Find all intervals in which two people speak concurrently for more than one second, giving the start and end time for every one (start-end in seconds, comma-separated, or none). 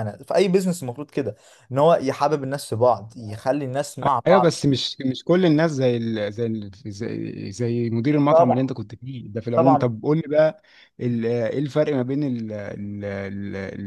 none